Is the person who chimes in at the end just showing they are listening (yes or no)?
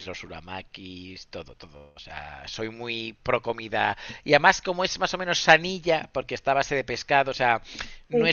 yes